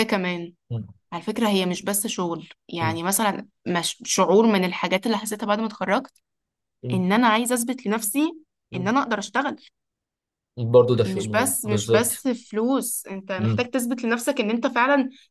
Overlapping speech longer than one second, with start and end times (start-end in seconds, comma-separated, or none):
11.1-12.2